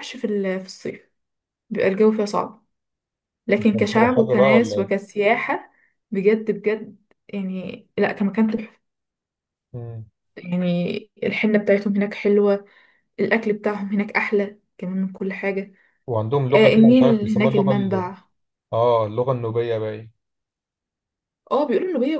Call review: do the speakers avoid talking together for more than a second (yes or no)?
no